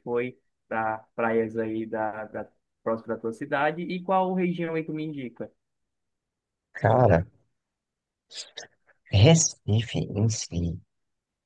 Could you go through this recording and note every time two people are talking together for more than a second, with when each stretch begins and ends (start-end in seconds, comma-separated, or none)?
none